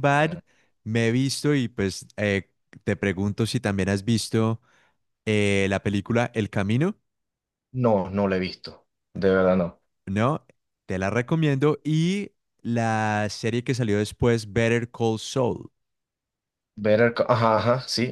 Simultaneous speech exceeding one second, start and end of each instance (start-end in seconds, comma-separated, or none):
none